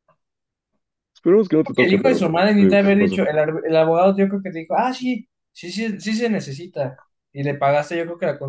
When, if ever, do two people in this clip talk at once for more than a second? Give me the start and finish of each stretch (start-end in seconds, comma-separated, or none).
1.8-3.2